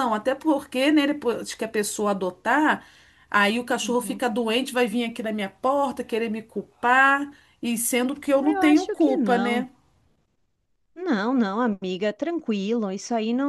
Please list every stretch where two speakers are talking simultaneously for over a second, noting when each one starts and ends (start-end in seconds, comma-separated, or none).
8.3-9.7